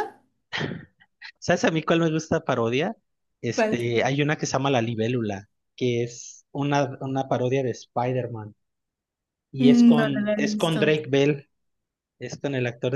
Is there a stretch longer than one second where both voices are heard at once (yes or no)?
yes